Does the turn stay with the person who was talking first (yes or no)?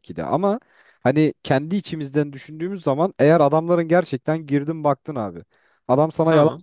yes